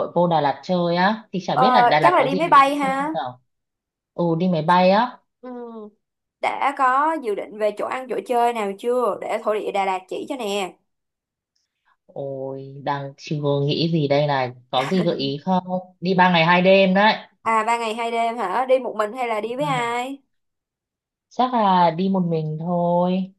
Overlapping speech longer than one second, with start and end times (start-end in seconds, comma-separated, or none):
1.5-3.1